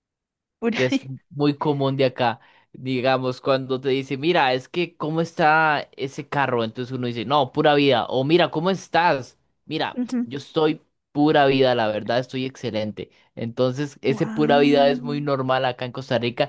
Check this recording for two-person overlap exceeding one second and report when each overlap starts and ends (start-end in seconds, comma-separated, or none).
14.1-15.3